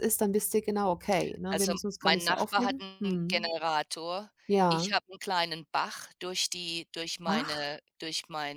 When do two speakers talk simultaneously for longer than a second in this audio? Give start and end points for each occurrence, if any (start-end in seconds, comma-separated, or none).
1.5-3.5